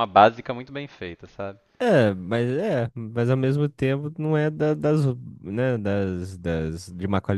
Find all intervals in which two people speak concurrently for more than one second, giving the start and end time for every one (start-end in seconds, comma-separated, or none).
none